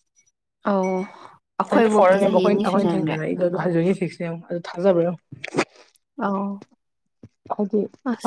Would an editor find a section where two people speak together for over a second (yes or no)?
yes